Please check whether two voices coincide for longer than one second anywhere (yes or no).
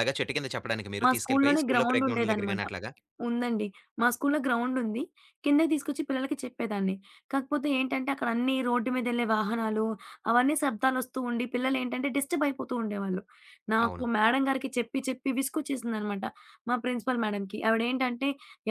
yes